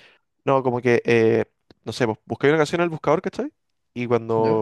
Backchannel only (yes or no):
yes